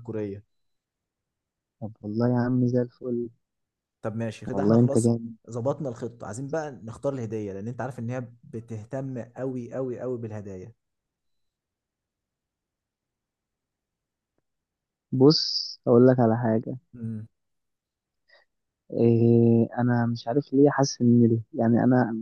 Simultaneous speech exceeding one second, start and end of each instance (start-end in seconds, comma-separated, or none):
none